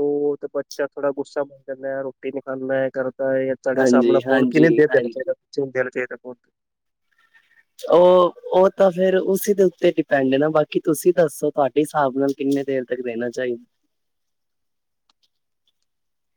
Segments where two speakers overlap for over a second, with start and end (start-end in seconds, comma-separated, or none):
3.8-5.3